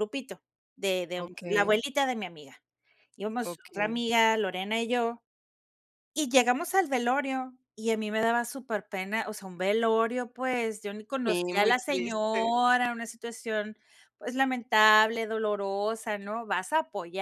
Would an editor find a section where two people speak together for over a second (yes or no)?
yes